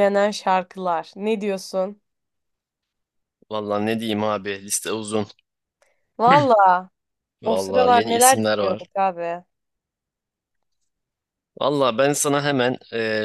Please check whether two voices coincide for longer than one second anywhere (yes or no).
yes